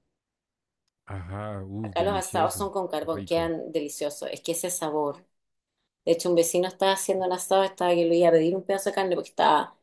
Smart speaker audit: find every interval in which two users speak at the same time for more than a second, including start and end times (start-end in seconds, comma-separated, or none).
1.8-3.5